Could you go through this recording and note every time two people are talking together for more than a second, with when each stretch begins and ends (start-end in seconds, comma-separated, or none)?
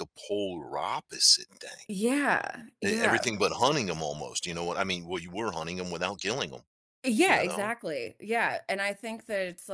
none